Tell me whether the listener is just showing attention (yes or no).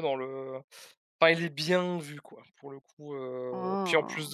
yes